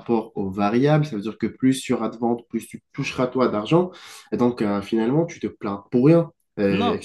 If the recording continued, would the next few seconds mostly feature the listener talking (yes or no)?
yes